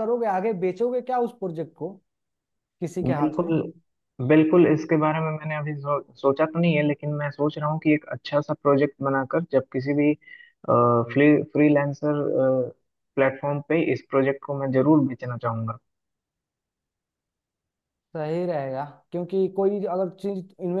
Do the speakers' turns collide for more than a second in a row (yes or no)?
no